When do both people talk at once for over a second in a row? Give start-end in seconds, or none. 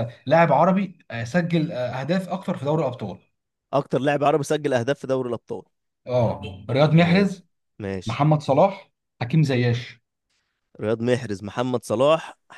none